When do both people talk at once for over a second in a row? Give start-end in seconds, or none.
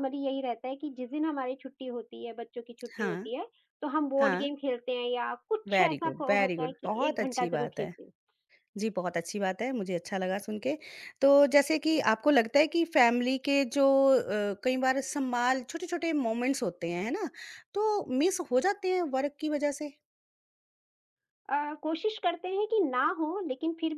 5.7-7.9